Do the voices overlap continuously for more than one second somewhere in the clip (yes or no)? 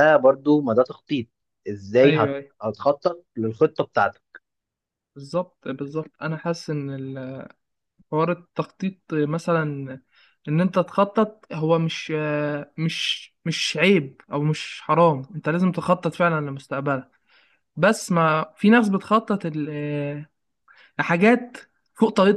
no